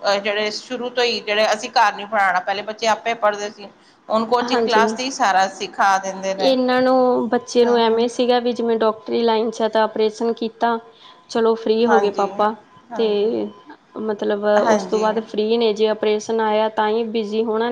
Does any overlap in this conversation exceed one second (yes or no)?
no